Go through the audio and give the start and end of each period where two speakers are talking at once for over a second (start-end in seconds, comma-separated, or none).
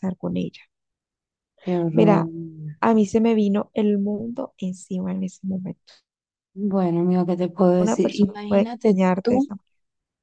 7.8-9.5